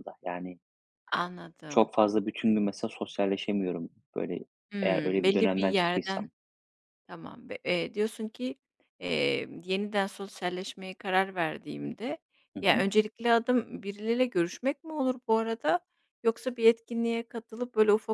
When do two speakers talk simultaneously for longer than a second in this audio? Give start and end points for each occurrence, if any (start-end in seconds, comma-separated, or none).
4.8-6.3